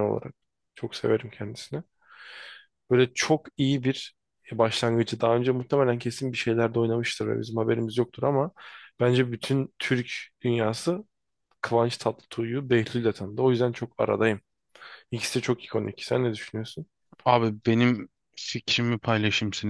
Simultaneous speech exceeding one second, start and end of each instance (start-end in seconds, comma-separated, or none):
none